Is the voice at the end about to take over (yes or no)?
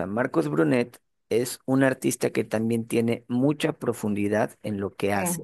no